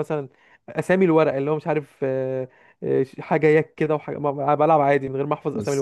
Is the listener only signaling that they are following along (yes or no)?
no